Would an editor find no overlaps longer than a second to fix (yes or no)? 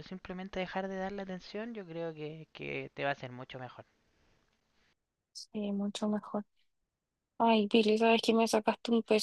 yes